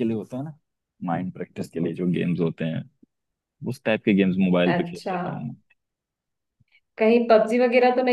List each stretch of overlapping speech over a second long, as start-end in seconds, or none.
none